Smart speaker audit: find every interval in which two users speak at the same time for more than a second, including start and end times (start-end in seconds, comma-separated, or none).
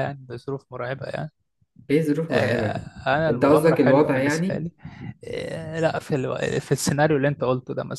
3.3-4.7